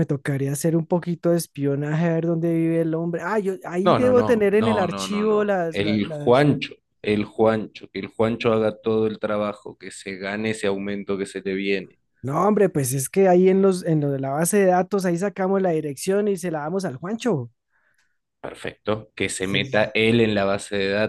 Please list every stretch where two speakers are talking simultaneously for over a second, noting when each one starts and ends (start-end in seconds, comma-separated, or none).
3.8-6.5